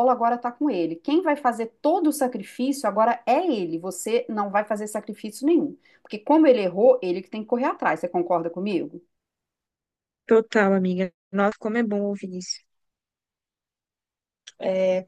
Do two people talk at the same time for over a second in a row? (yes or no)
no